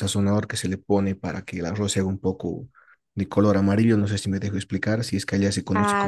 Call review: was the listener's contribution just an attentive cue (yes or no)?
no